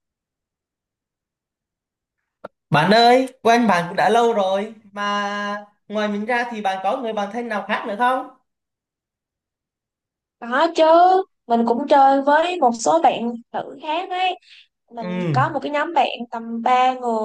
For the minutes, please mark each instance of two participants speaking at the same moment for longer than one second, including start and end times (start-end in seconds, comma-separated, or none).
none